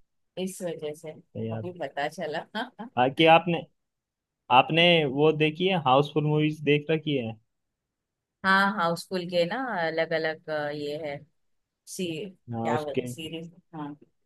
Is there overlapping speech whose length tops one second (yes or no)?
no